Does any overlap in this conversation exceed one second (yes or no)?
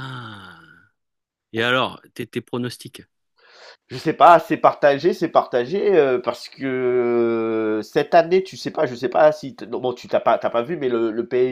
no